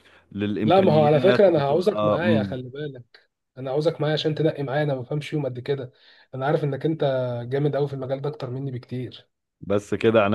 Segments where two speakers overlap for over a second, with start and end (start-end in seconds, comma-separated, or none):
0.6-2.6